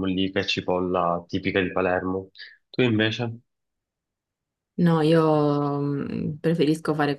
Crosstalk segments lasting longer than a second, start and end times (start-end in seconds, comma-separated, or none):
none